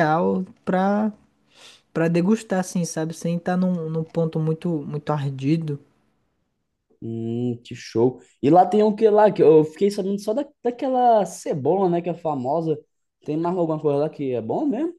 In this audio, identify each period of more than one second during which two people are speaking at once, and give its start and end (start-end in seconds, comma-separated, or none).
none